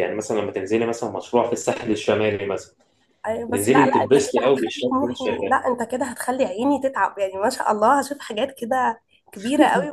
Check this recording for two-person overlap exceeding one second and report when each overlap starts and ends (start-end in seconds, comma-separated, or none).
3.5-5.5